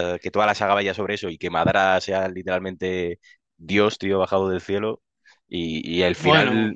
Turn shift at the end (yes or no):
no